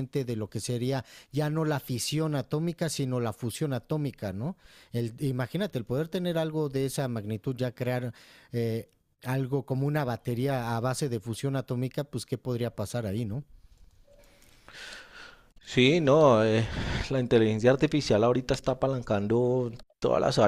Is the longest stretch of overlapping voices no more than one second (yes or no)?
yes